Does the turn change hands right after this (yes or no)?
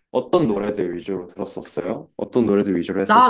yes